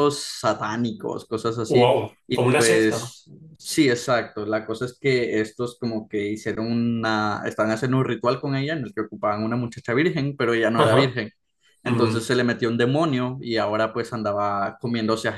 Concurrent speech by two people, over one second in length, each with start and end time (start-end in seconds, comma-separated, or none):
1.7-3.1